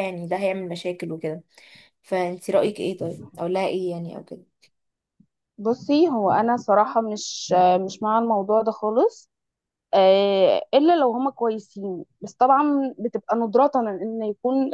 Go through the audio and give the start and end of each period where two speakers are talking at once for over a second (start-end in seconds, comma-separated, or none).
none